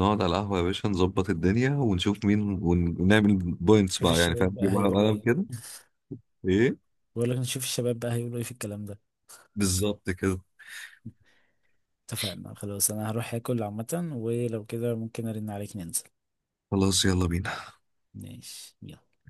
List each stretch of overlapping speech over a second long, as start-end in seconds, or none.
4.0-5.3